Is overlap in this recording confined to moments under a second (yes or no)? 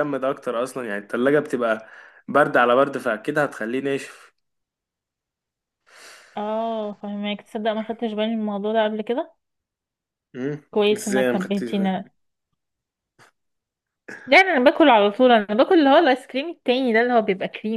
no